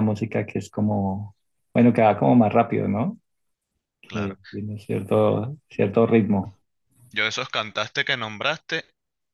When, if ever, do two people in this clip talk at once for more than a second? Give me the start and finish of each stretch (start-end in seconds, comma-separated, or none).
none